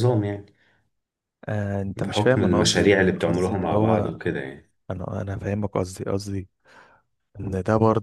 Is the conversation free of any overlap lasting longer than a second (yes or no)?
no